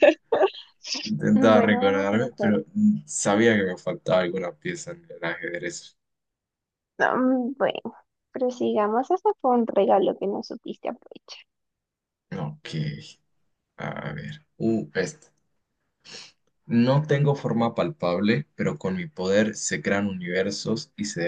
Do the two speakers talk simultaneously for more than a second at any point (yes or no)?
yes